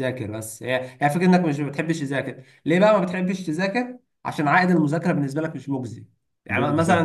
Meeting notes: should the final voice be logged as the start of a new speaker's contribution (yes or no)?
no